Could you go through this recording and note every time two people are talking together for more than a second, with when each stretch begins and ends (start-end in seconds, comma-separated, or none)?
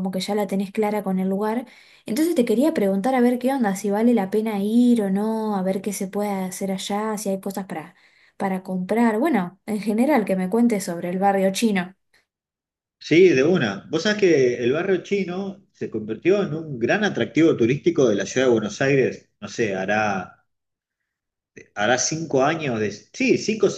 none